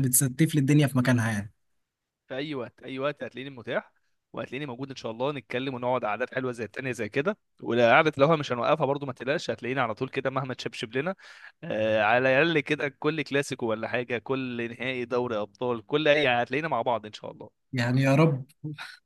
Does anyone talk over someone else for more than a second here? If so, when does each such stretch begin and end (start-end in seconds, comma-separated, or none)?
none